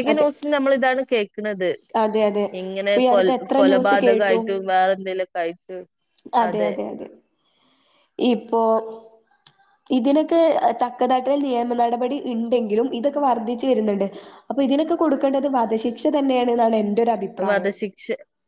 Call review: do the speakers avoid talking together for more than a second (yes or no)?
no